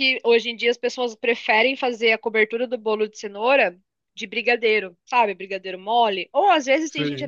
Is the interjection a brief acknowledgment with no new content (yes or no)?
yes